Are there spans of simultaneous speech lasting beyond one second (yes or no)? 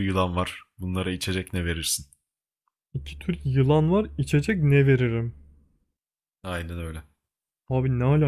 no